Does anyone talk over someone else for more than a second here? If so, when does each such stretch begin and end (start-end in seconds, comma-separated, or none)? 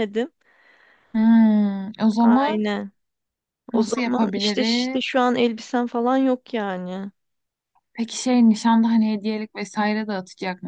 3.7-5.0